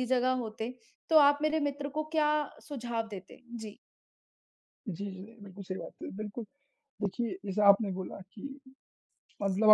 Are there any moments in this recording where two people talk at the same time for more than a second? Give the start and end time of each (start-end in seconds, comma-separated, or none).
none